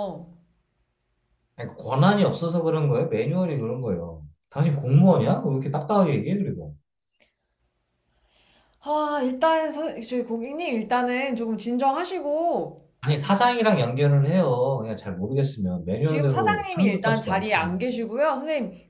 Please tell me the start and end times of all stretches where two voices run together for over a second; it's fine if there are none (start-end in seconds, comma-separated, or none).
16.0-17.9